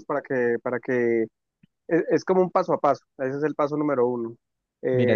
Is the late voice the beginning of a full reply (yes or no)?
no